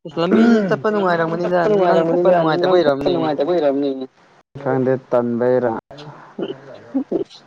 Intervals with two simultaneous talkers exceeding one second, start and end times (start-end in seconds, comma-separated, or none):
1.0-3.1